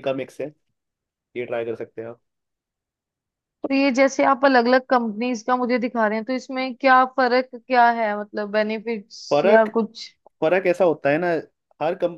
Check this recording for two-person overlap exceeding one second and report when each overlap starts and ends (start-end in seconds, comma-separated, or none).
none